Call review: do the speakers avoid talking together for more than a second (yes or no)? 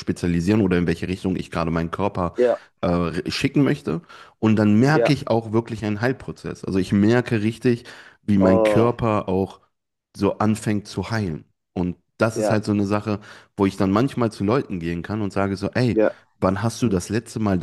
yes